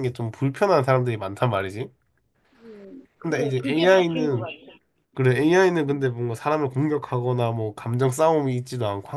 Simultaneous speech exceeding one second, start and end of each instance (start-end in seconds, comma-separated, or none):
3.2-4.5